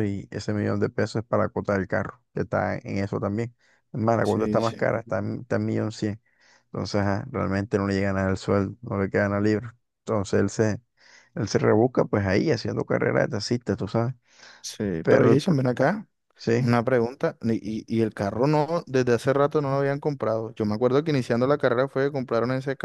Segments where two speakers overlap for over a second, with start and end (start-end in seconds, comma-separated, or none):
none